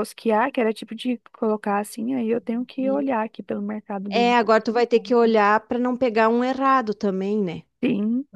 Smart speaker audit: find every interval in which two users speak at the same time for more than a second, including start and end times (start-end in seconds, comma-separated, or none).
none